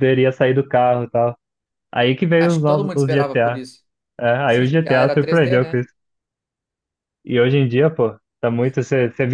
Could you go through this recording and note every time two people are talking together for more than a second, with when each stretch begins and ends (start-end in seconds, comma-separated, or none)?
2.4-3.6, 4.5-5.9